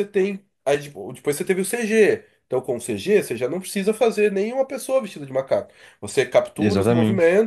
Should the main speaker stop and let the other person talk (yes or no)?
no